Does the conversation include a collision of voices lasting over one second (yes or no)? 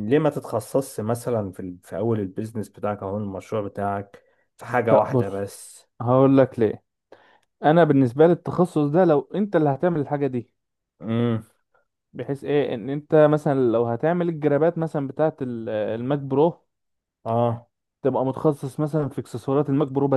no